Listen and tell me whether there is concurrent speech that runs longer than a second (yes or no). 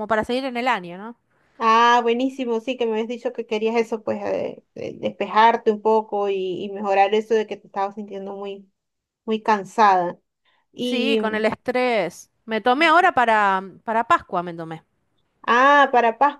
no